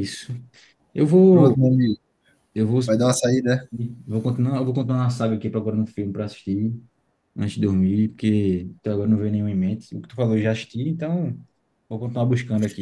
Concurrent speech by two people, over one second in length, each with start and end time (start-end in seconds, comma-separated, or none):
none